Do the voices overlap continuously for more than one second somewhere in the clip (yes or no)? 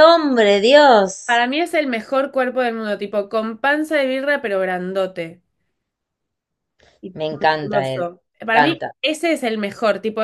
yes